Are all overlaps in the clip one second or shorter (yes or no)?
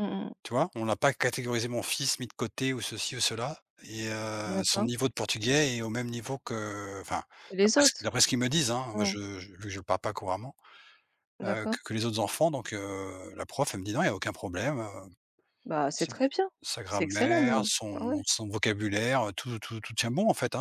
no